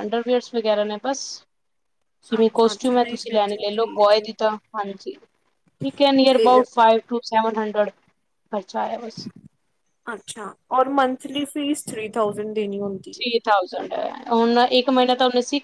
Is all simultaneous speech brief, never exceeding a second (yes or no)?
no